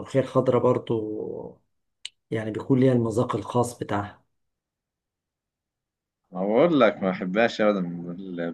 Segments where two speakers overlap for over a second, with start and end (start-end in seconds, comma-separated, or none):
none